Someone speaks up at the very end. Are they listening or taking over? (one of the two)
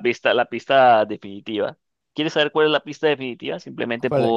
taking over